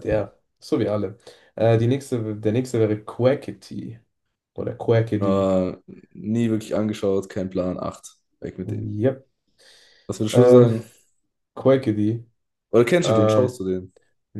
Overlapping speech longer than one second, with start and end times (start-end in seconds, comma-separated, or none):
none